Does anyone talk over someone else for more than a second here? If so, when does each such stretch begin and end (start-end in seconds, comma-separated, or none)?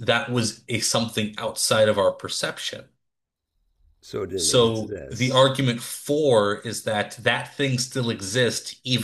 4.3-5.6